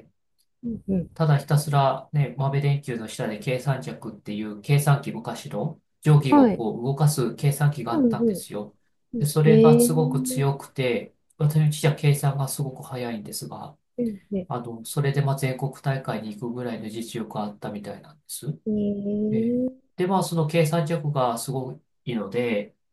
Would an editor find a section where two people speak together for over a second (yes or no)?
yes